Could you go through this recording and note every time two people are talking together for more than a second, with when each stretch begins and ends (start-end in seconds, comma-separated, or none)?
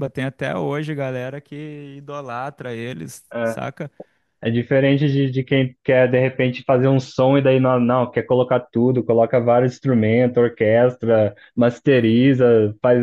none